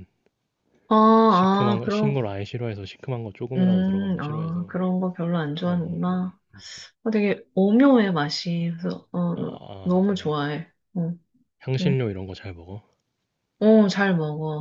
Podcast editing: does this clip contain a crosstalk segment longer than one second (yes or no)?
yes